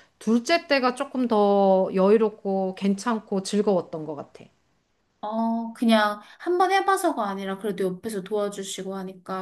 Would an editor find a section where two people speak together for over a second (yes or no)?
no